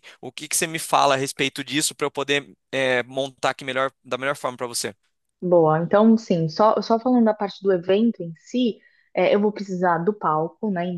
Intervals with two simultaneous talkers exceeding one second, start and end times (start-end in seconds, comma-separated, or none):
none